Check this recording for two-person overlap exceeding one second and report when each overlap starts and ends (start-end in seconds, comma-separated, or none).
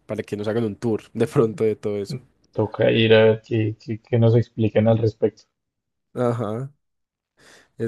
none